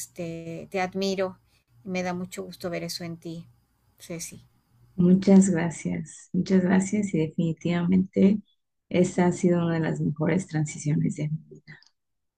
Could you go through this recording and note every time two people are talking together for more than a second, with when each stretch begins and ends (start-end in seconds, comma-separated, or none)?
none